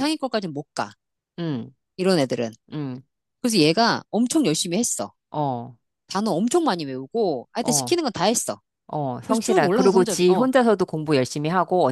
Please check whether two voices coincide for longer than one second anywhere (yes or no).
yes